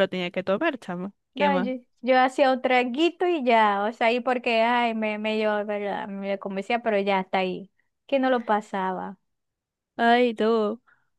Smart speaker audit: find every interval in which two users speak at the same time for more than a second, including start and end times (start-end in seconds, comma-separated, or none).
none